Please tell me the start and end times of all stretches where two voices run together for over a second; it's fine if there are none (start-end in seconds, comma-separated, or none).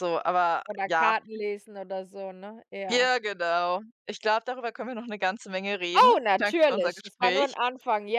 6.0-7.5